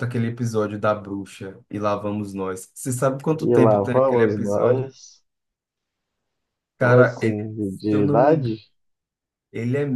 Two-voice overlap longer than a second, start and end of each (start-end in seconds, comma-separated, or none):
3.4-4.9, 6.8-8.6